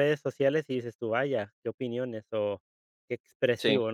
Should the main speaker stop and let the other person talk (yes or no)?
no